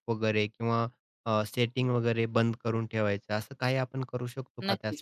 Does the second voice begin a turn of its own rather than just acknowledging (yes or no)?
yes